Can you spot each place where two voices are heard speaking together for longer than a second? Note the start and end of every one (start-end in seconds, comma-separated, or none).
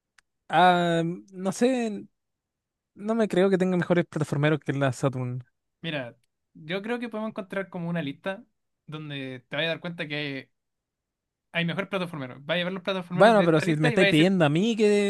13.1-14.3